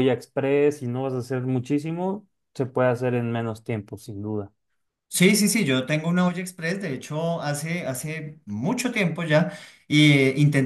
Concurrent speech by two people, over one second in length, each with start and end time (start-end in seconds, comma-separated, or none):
none